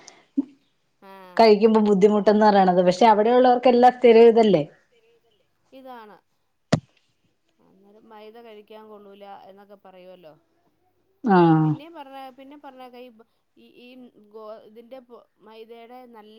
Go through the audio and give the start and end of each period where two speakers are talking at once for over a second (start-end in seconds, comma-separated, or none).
none